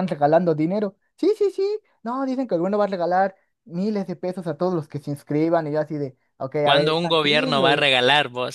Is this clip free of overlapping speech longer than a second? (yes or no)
no